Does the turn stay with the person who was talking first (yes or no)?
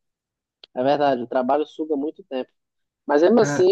yes